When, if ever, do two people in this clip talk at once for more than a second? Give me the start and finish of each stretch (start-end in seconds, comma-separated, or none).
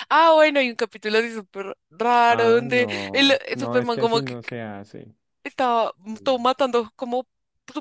2.3-4.5